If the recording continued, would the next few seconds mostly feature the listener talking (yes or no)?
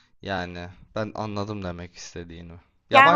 yes